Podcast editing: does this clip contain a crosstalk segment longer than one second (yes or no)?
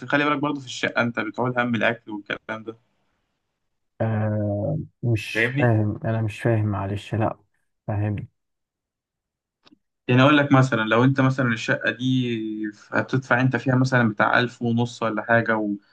no